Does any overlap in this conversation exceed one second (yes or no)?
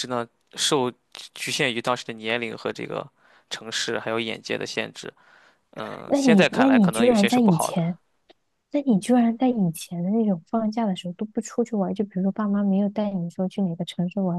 yes